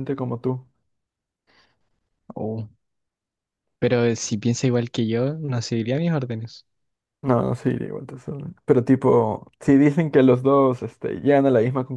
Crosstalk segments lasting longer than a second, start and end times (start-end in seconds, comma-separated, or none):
none